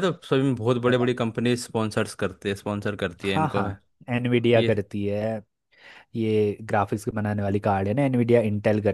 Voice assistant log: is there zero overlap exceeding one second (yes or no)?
yes